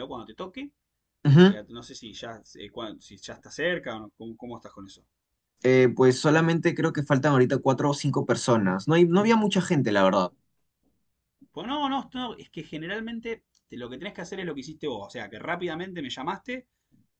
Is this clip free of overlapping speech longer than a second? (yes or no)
yes